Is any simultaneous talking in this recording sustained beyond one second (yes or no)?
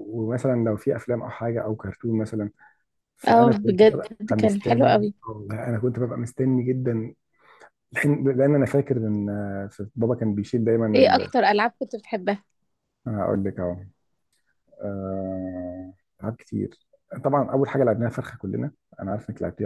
yes